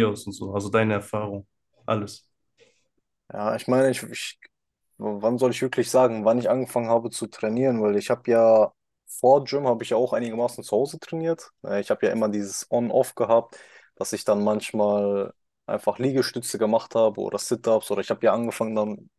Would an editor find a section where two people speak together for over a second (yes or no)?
no